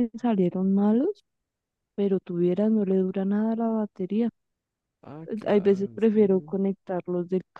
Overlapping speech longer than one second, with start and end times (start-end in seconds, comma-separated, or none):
5.3-6.6